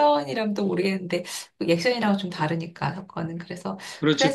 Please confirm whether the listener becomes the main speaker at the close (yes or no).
yes